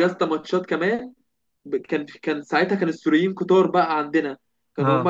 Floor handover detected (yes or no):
no